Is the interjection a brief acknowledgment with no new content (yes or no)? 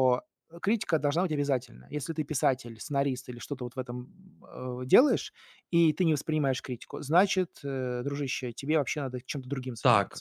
no